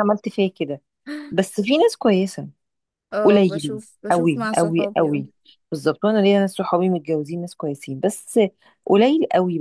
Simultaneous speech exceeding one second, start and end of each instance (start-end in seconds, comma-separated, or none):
3.2-5.2